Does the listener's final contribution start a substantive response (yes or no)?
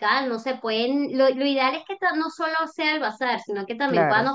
no